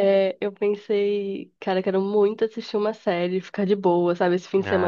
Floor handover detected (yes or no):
no